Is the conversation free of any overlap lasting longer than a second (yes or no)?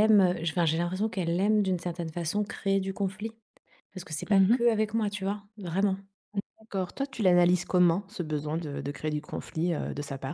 yes